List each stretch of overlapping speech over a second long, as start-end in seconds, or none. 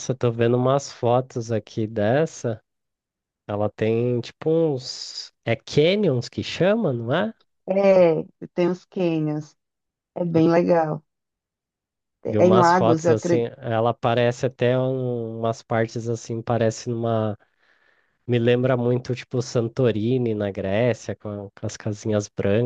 12.3-13.5